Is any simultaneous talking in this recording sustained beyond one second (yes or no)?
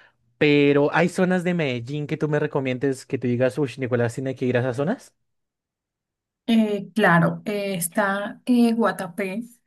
no